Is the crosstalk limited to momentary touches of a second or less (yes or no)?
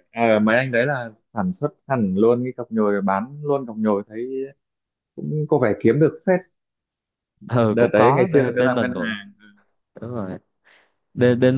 no